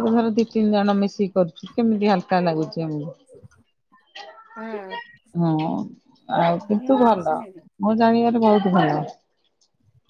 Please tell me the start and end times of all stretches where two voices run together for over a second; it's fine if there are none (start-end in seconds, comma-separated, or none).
6.4-7.7